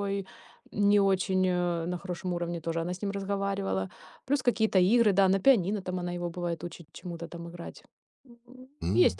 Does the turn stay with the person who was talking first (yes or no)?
no